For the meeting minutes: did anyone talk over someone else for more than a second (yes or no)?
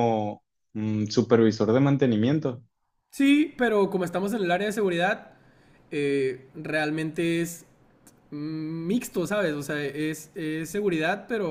no